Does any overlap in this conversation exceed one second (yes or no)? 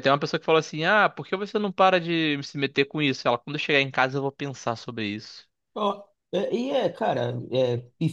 no